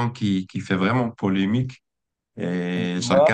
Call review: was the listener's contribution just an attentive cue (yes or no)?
yes